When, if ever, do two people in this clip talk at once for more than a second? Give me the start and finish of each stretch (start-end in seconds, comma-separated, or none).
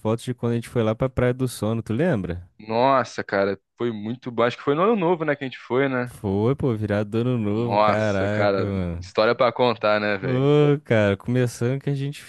7.6-9.1